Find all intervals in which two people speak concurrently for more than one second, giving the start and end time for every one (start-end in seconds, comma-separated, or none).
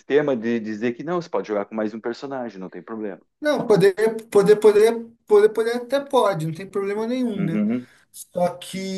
none